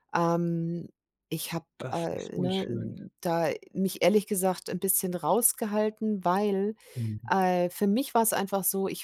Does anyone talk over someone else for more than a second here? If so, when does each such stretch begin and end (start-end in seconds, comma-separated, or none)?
1.8-3.0